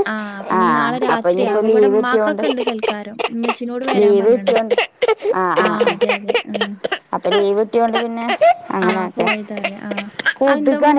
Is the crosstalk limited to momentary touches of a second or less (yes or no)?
no